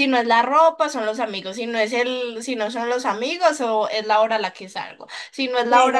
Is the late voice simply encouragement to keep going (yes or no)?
yes